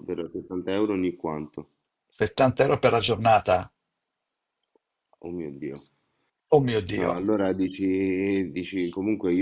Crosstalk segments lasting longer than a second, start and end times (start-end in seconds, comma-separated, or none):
none